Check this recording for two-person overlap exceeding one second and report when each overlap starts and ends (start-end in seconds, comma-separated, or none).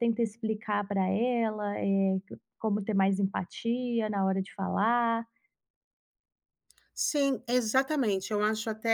none